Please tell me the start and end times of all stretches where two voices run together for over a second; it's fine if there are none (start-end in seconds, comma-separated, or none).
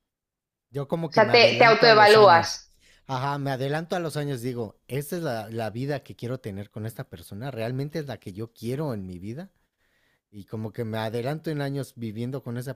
1.1-2.6